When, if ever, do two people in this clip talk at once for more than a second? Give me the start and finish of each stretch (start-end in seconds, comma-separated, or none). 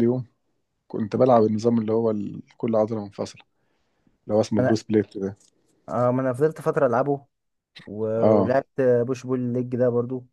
none